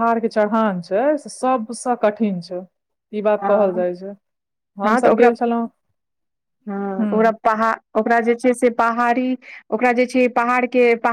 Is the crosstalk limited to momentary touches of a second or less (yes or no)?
yes